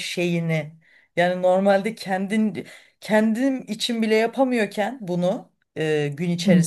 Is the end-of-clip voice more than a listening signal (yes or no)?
no